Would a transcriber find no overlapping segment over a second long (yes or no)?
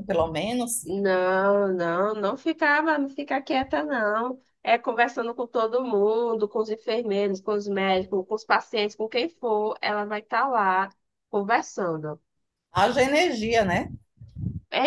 yes